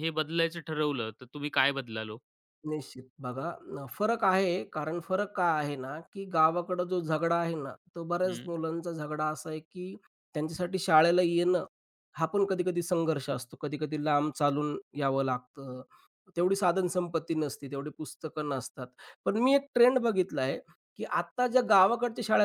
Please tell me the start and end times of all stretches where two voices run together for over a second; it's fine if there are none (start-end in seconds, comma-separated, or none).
none